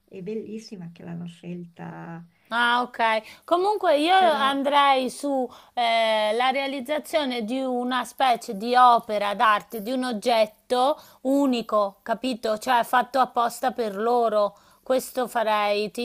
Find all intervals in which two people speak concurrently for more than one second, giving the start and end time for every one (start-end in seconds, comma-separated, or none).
none